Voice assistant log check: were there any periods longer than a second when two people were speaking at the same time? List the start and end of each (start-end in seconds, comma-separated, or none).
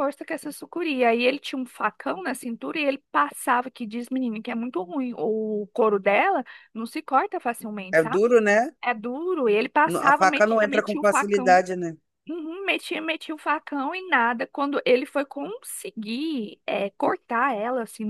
9.8-11.6